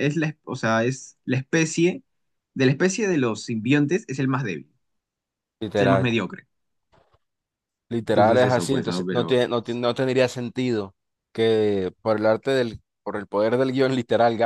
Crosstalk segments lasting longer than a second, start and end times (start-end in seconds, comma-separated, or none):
8.1-9.4